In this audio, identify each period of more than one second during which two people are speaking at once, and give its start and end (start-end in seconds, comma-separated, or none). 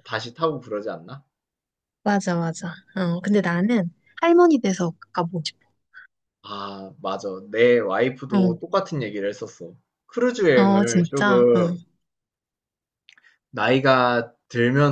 10.5-11.8